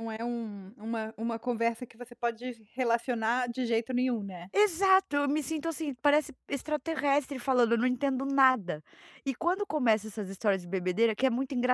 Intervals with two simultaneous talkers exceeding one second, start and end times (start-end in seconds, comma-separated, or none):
none